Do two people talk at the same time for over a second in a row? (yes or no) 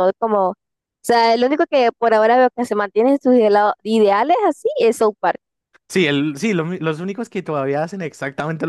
no